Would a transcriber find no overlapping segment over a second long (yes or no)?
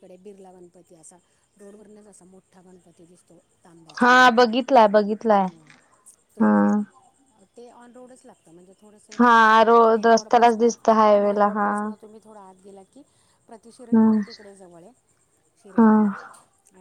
no